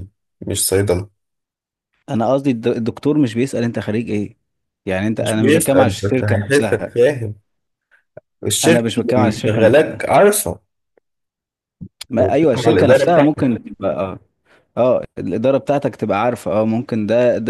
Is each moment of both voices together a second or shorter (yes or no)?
no